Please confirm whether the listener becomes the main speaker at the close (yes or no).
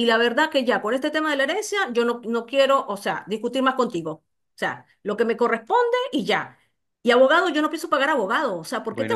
yes